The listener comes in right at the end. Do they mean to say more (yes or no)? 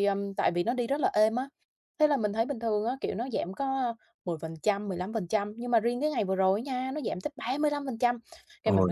no